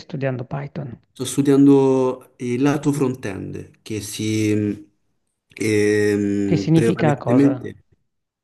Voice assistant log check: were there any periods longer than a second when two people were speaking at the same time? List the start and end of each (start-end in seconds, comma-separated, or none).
6.4-7.7